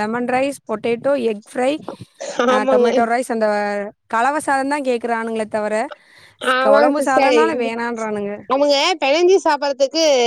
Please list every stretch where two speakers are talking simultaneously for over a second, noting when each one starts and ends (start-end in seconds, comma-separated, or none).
none